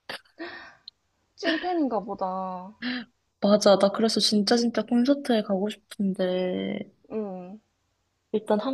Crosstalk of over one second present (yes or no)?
no